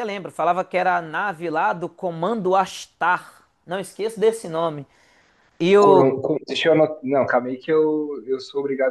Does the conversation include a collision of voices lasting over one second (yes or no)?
no